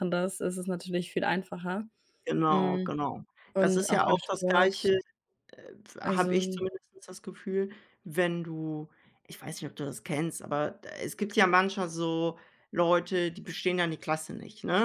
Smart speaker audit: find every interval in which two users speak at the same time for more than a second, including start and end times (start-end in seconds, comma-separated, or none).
3.6-4.9